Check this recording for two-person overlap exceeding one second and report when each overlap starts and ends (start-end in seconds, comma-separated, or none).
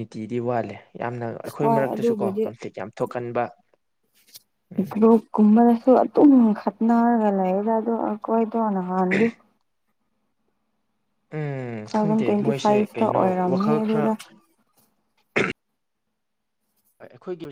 11.8-14.0